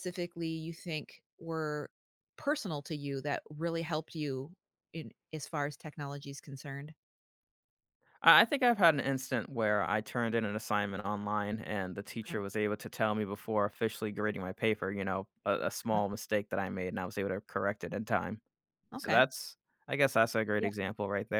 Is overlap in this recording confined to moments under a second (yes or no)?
yes